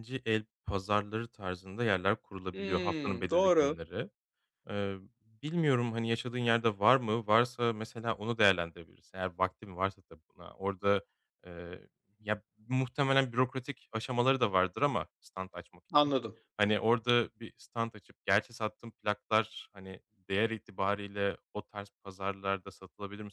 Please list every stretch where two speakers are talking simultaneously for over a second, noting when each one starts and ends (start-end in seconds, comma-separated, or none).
2.5-3.8